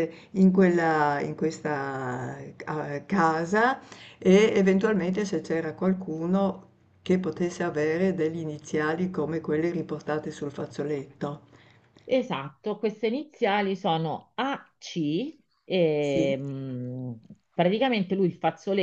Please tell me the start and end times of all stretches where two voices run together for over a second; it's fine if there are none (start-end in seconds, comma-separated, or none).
none